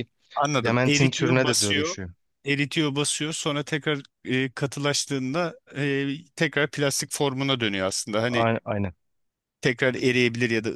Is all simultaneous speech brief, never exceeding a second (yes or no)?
no